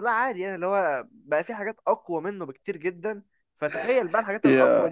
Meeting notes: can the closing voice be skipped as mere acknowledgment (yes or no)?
yes